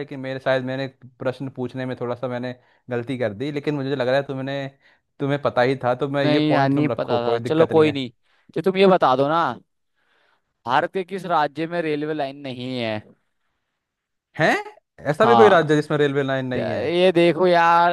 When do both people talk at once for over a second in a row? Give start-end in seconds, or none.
6.2-8.0